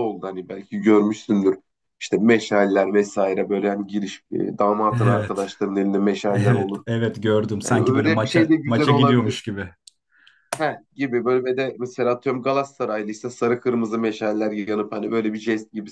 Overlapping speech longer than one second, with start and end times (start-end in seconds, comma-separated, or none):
7.6-9.3